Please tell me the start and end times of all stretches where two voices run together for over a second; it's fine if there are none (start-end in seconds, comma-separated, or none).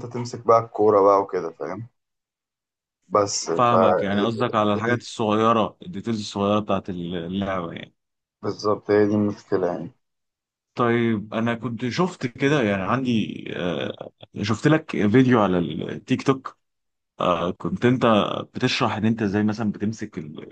none